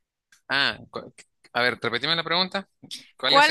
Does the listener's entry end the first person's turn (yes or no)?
yes